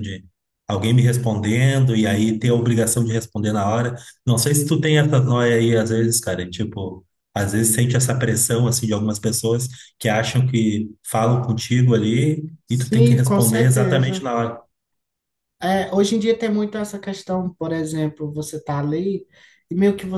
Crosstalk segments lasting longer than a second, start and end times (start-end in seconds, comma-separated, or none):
12.7-14.3